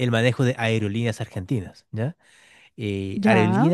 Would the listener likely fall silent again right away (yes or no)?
yes